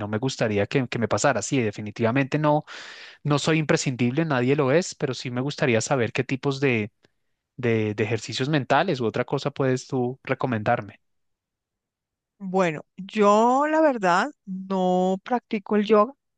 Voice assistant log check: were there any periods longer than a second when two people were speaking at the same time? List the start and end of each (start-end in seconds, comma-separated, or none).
none